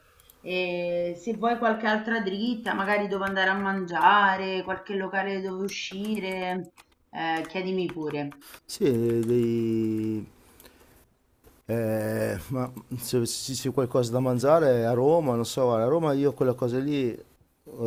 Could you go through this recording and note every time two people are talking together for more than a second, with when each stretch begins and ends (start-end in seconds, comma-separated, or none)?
none